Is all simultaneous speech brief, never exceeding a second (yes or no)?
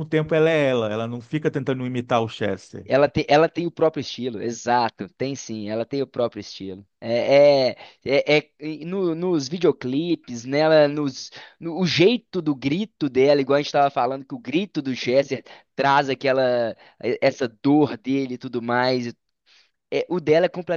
yes